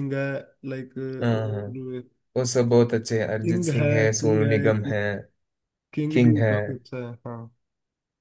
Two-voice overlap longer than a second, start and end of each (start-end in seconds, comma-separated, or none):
3.4-5.0